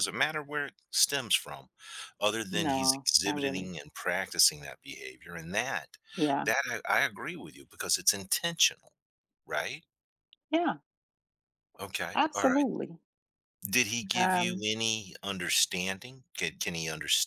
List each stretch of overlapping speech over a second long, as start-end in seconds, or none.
2.5-3.7